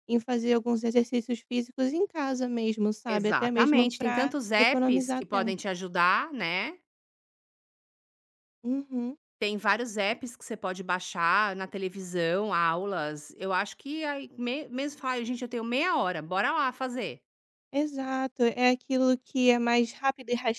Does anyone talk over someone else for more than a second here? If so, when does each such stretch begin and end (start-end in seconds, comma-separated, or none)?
3.1-5.5